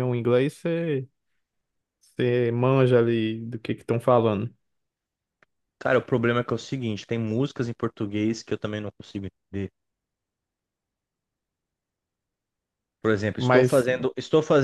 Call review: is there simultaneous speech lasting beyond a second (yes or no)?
no